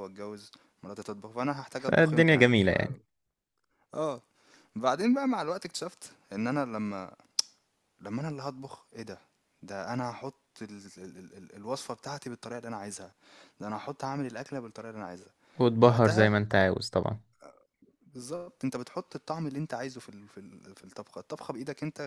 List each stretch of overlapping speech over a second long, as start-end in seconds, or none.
1.8-3.0